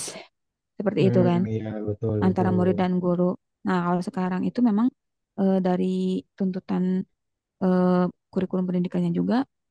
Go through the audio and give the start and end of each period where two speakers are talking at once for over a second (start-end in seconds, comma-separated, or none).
none